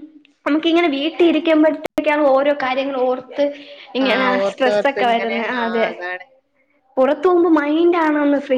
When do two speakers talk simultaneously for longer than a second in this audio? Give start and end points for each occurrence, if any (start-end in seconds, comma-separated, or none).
4.1-5.9